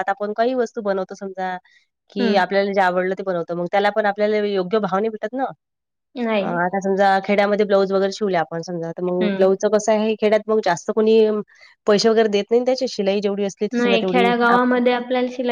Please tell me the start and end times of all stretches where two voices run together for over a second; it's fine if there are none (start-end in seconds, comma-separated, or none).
none